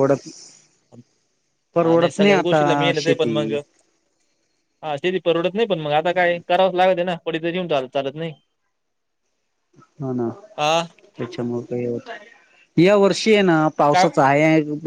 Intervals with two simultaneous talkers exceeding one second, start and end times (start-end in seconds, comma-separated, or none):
1.8-3.4